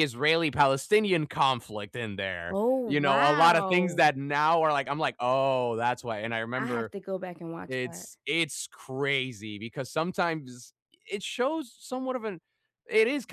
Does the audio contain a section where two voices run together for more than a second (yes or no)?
yes